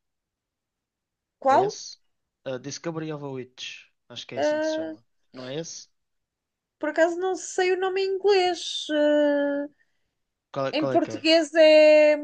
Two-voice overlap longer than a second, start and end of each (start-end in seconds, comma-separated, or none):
none